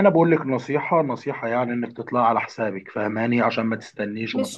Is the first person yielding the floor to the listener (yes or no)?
yes